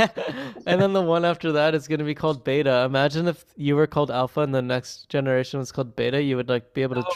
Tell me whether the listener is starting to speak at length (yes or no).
yes